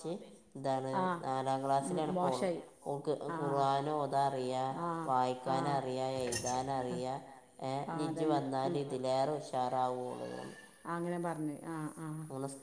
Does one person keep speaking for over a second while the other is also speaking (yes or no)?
yes